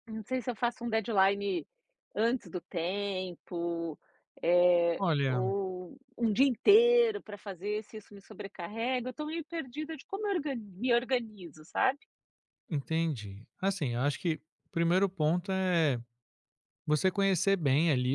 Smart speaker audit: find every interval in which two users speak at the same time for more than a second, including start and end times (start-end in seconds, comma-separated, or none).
none